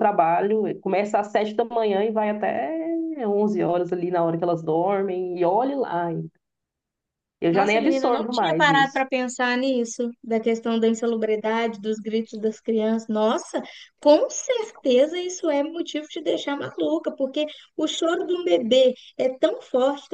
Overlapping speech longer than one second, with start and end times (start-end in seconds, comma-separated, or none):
7.5-9.0